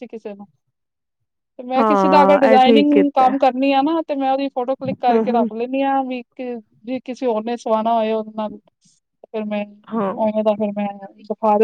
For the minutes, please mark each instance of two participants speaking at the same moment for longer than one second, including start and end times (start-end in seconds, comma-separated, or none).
1.8-3.3